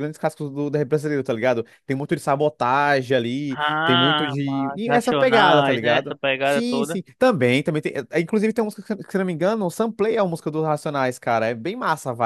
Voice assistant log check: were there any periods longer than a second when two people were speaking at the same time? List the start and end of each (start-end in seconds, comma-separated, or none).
3.5-7.0